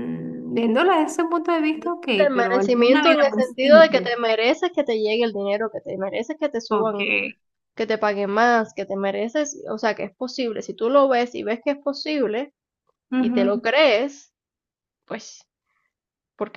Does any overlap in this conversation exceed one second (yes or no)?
yes